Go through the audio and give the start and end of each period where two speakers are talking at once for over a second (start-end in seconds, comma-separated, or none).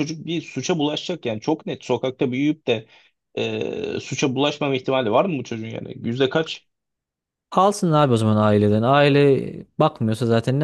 none